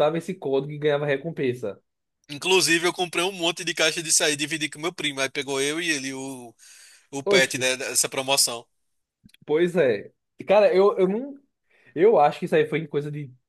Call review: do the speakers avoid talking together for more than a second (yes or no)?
yes